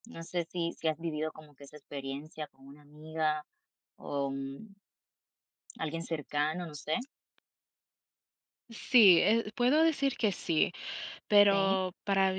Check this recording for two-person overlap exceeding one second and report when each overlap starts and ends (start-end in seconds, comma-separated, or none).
none